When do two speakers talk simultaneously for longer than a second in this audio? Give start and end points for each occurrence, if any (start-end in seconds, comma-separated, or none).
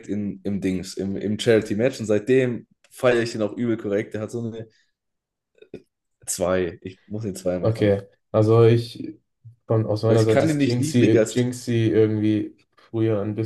10.1-11.5